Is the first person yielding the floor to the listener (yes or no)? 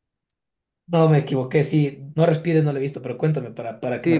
yes